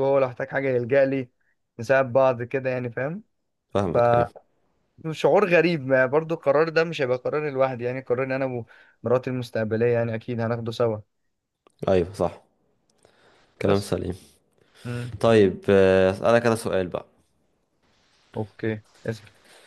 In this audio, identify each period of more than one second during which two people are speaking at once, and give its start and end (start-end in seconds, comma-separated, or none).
none